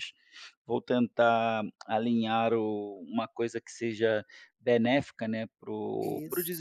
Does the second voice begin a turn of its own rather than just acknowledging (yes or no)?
no